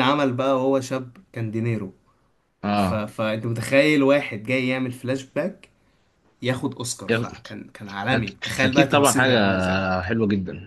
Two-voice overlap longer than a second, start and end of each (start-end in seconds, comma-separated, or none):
8.2-9.4